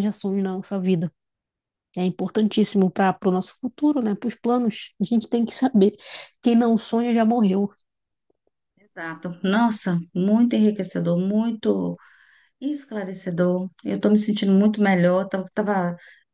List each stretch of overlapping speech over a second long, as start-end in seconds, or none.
none